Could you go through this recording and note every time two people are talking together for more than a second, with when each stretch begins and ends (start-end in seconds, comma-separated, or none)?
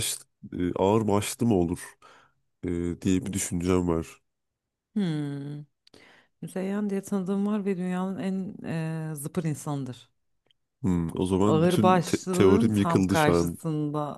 11.5-13.6